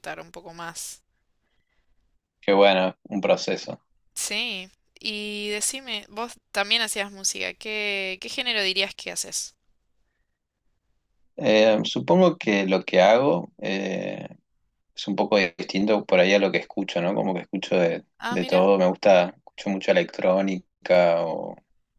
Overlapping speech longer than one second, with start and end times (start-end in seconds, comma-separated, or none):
none